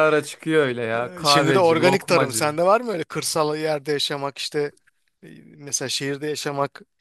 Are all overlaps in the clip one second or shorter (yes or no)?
no